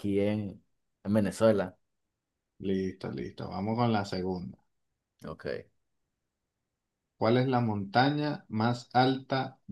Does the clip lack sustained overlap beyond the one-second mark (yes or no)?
yes